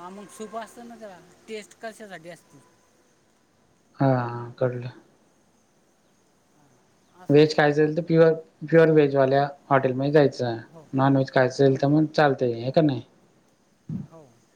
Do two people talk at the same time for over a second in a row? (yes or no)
no